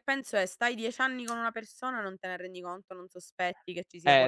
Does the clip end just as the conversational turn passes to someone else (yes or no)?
yes